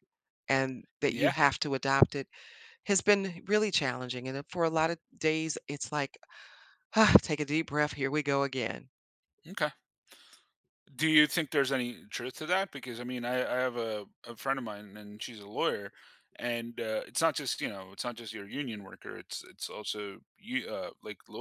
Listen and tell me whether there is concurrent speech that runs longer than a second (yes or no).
no